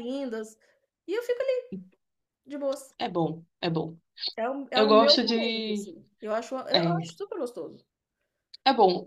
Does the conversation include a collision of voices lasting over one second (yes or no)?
yes